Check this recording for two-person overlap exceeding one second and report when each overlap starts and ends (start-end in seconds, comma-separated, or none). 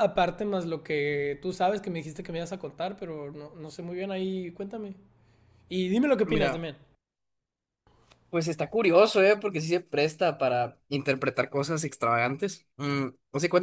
none